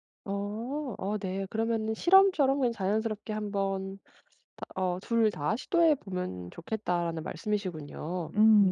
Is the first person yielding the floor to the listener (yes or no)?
yes